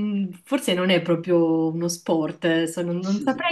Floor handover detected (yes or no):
no